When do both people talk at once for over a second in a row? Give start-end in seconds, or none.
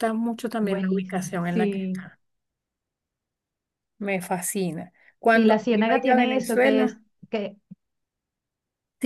0.6-2.0, 5.2-7.0